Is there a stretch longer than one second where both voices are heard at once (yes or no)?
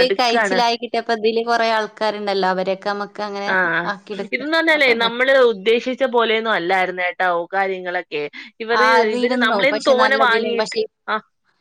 yes